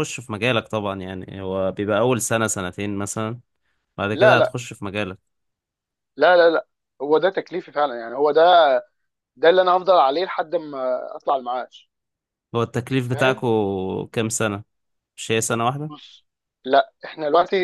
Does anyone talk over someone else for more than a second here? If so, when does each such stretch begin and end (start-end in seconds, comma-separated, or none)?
none